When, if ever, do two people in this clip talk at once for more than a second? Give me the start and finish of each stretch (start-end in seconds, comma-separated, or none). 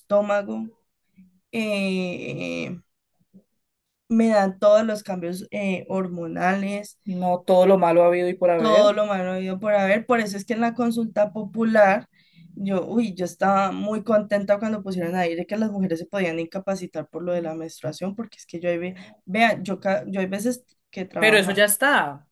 none